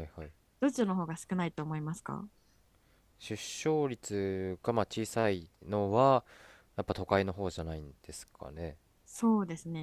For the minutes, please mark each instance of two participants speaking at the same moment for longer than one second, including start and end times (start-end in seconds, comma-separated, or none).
none